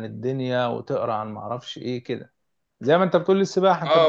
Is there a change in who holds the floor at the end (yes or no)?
yes